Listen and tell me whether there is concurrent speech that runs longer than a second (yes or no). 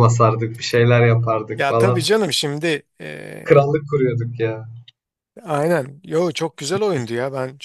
no